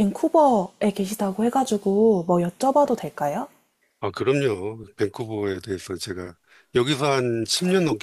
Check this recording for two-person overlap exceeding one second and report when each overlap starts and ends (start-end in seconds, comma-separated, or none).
none